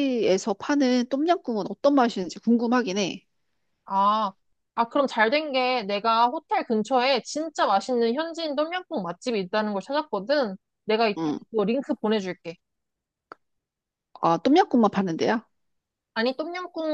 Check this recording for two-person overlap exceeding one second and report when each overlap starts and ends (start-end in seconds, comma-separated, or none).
none